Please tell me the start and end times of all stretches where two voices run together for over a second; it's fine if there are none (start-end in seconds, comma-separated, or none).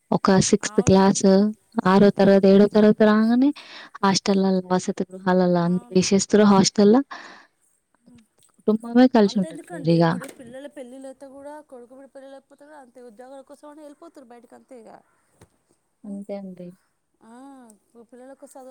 none